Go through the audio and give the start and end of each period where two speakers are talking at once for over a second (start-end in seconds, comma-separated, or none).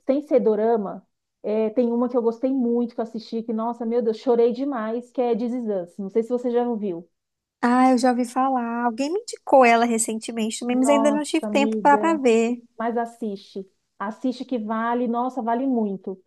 10.7-12.2